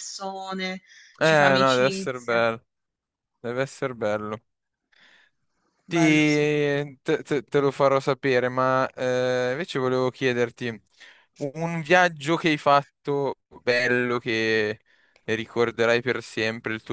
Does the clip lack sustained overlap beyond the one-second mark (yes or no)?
no